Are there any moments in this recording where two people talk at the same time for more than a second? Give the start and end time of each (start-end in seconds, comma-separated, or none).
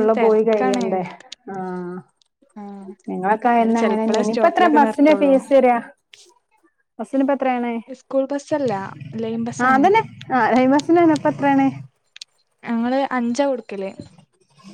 3.6-5.3